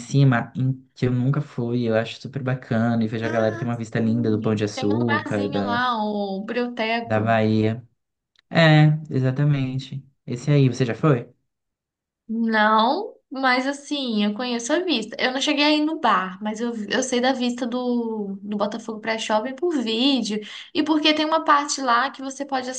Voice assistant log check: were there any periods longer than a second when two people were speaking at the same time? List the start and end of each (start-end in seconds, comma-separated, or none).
3.2-5.8